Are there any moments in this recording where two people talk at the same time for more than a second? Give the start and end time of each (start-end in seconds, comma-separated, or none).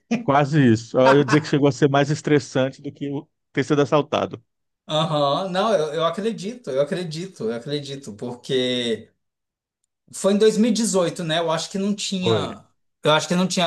none